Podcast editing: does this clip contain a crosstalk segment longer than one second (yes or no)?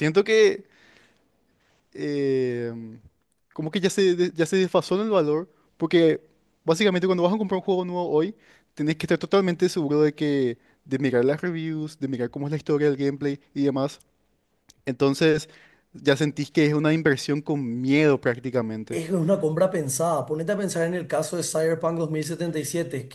no